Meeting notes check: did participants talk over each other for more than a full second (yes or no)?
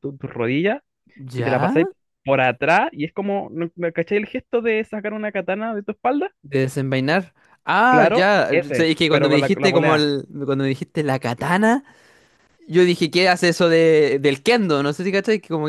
yes